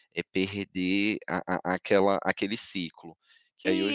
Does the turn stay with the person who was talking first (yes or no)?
no